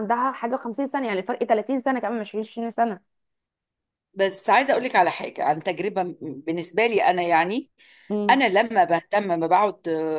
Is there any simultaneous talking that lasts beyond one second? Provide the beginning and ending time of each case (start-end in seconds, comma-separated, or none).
none